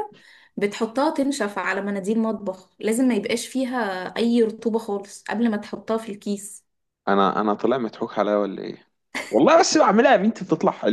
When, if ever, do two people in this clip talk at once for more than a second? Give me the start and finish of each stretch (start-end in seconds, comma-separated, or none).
none